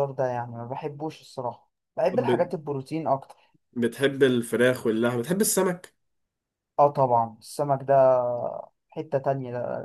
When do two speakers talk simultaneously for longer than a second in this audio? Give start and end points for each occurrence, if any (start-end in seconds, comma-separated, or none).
none